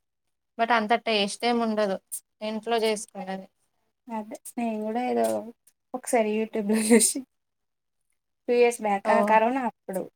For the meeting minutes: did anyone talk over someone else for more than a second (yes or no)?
no